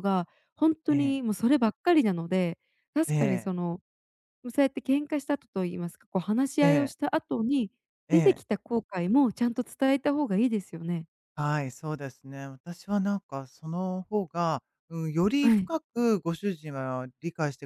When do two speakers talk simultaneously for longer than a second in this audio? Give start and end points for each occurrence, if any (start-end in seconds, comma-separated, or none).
none